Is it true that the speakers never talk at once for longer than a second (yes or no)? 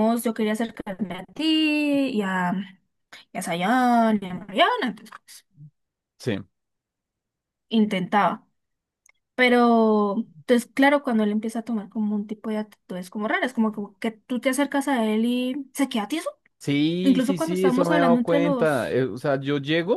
no